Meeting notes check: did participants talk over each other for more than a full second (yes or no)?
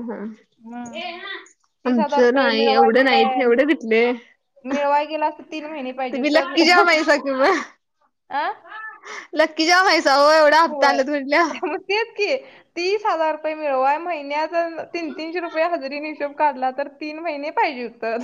yes